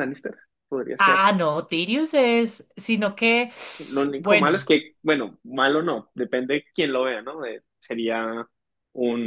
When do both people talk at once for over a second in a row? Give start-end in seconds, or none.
none